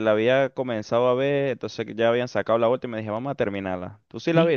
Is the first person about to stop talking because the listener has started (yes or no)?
yes